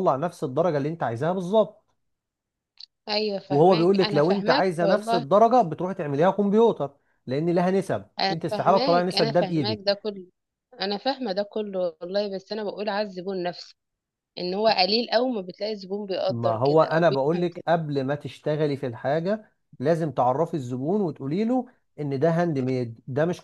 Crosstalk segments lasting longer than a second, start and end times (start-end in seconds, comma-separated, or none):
3.5-5.2, 8.2-9.8, 16.3-17.6